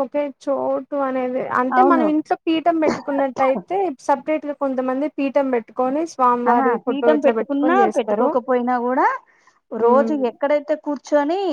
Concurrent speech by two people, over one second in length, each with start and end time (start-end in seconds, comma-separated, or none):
none